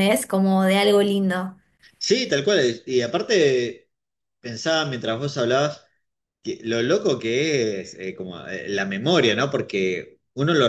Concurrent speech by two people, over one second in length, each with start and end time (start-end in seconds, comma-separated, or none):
none